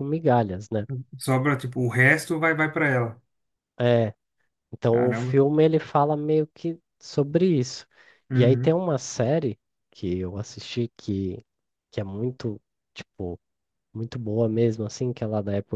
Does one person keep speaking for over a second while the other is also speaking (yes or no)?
no